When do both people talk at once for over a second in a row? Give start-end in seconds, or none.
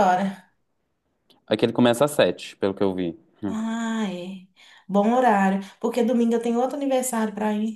none